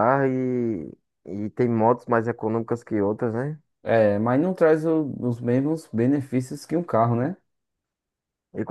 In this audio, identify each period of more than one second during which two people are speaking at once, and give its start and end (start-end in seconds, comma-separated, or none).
none